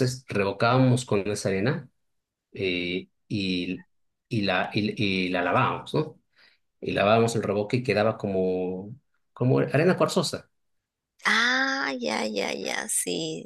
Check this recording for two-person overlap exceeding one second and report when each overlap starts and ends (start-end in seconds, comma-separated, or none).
none